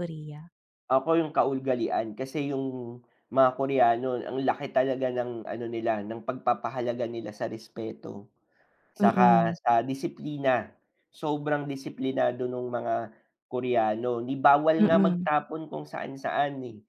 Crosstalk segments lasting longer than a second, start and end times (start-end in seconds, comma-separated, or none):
none